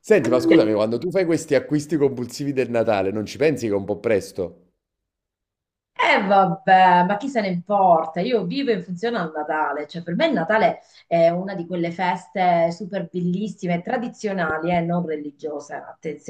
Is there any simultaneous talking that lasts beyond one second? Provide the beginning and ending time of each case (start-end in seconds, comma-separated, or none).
none